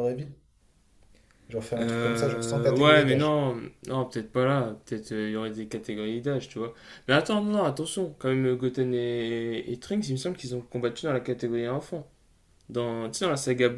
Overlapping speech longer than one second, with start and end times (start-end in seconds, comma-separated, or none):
1.8-3.4